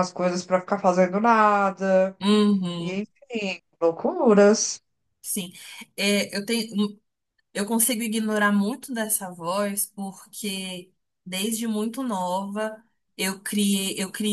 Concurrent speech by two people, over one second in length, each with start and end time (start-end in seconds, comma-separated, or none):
none